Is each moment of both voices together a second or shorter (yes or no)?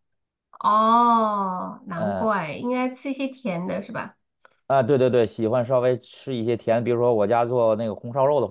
yes